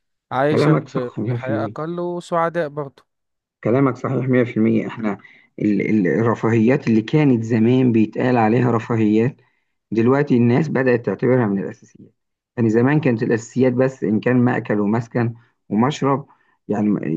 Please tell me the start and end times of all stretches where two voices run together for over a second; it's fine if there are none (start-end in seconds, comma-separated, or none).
0.5-1.8